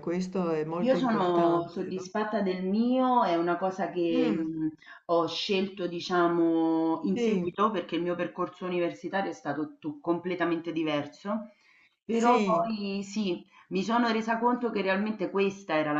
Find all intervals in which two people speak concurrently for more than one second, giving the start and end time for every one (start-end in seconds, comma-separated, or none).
0.8-2.0